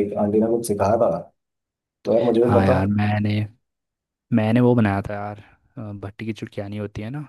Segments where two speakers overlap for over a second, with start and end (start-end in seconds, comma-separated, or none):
none